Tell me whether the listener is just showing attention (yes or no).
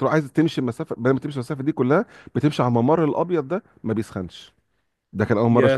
yes